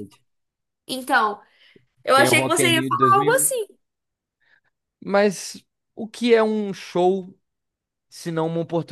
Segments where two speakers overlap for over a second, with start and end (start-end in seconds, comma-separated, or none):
2.1-3.5